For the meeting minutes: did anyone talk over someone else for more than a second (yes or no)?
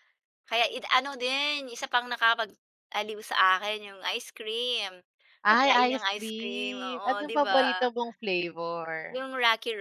yes